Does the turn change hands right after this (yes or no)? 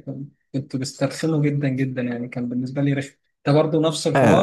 yes